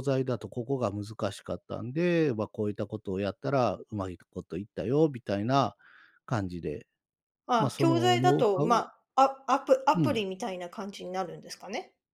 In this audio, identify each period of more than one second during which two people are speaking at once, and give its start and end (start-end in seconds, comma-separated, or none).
7.6-8.8